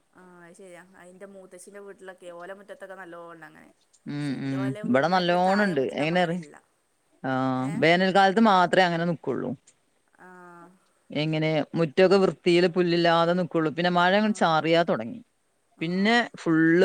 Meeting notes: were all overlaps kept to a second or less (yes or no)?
no